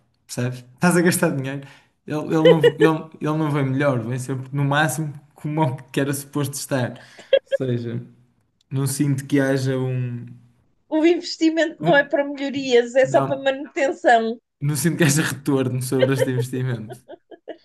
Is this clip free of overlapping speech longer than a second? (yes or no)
yes